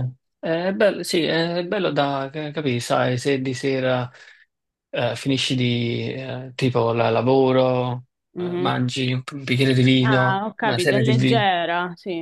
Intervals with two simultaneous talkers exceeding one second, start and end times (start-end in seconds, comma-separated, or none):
10.0-11.4